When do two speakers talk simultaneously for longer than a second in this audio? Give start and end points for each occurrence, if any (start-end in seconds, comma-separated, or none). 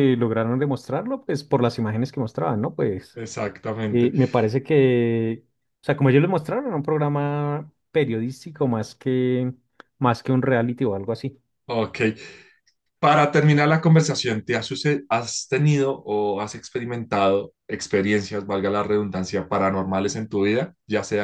none